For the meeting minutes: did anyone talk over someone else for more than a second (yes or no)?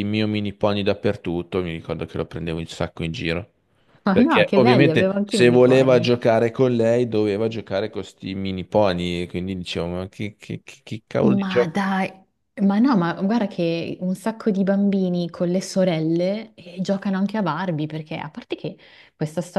yes